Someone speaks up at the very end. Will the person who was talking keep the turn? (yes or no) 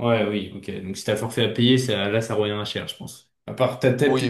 no